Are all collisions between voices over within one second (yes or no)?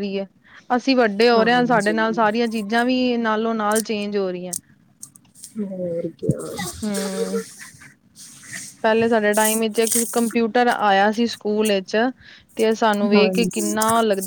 yes